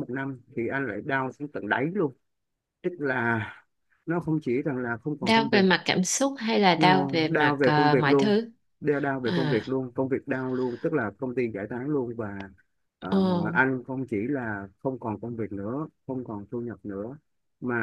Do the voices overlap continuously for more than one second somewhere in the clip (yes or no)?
yes